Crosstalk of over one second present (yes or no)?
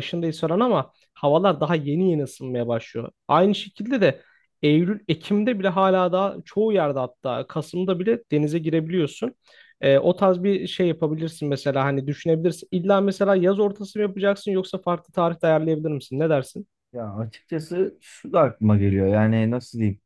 no